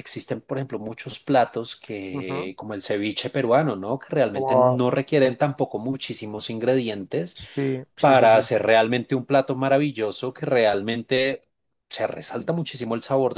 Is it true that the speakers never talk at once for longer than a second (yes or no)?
yes